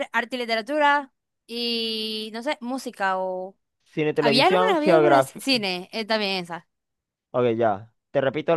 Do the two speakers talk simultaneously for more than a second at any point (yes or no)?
yes